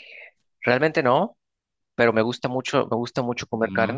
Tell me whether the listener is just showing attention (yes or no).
yes